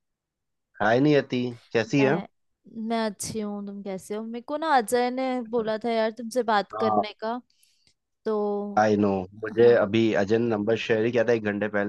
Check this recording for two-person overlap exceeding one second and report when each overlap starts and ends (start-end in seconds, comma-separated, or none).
none